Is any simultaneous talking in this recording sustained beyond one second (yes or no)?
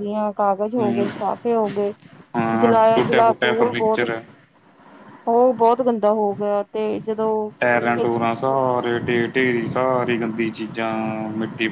yes